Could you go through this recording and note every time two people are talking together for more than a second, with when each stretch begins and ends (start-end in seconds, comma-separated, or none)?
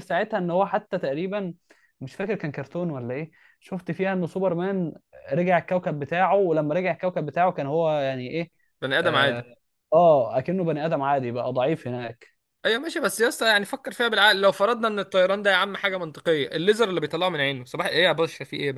none